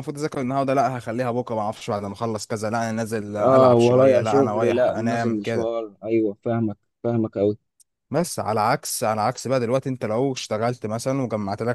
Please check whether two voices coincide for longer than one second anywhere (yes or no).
yes